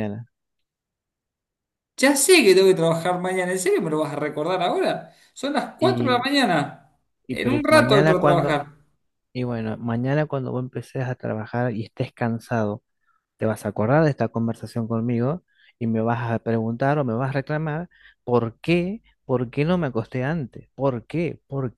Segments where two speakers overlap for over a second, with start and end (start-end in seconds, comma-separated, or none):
7.3-8.6